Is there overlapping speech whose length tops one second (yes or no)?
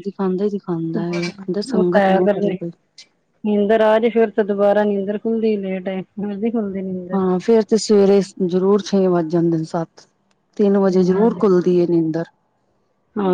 yes